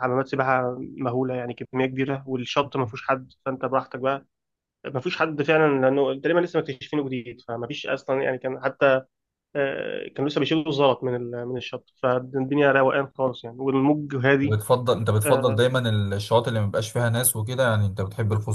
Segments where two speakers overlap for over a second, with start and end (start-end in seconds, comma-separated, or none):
none